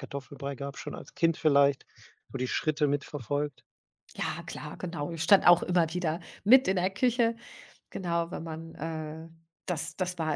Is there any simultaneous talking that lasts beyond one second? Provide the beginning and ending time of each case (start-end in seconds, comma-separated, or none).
none